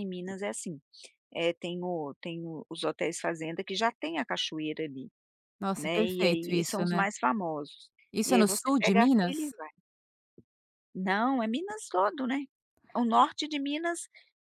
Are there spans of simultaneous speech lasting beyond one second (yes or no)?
yes